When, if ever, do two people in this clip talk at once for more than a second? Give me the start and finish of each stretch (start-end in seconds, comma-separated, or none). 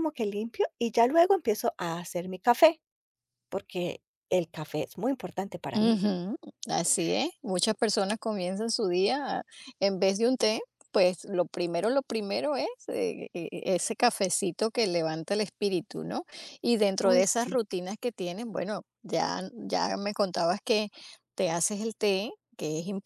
none